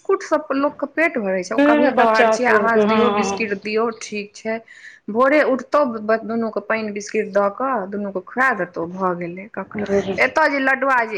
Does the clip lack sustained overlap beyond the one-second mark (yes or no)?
no